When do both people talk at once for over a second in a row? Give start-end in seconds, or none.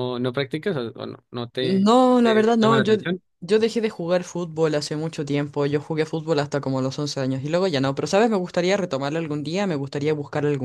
1.6-2.9